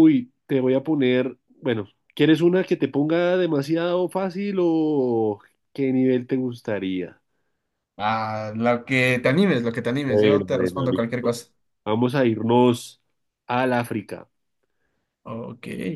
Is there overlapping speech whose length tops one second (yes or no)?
yes